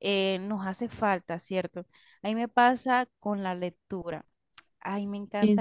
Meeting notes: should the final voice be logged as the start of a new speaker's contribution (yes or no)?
no